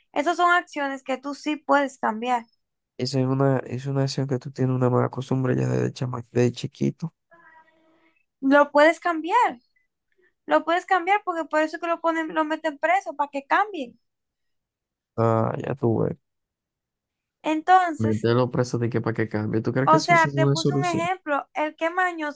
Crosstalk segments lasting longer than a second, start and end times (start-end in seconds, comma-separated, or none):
19.8-21.1